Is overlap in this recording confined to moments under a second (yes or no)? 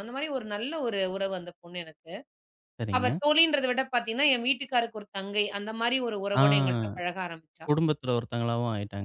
yes